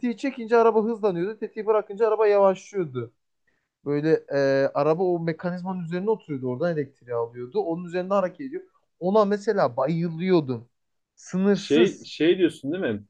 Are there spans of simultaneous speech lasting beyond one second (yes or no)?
no